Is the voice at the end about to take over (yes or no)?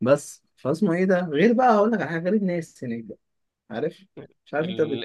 yes